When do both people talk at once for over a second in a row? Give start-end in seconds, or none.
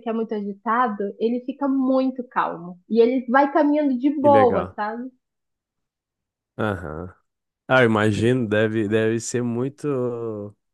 none